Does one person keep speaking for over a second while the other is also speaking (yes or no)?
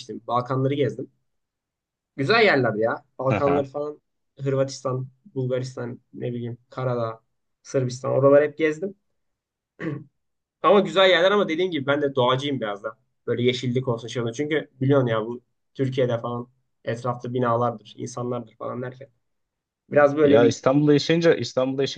no